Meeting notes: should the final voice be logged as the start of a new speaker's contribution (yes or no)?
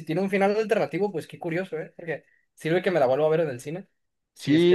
yes